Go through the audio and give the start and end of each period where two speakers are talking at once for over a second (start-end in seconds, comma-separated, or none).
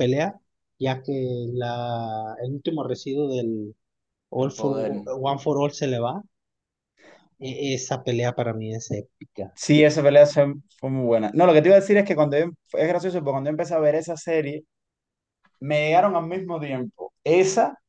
none